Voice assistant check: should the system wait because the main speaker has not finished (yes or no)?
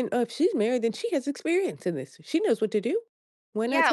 no